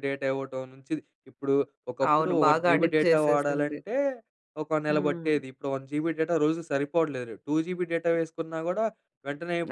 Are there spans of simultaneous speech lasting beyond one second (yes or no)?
yes